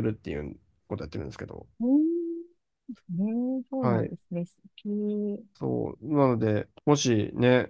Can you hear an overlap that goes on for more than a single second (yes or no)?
no